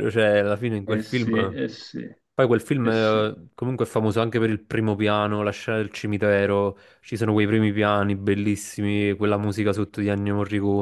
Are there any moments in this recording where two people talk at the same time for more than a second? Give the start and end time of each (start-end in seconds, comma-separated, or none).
none